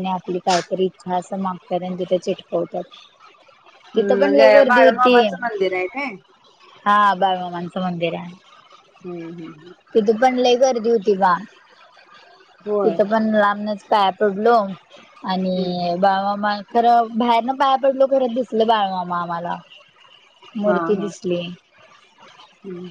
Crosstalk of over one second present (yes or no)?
yes